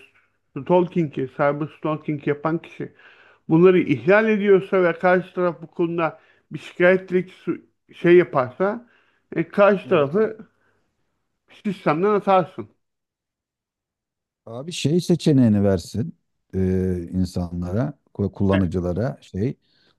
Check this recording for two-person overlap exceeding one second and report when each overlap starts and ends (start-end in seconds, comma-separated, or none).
none